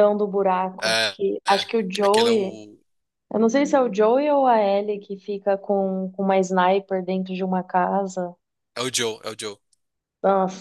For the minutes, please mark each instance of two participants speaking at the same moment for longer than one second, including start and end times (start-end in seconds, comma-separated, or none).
0.8-2.6